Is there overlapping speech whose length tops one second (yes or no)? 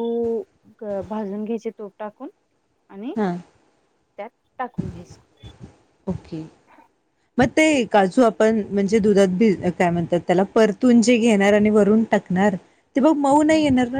no